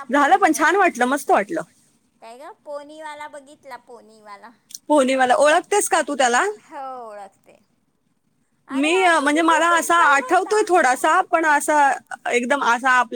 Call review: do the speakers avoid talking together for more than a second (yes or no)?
no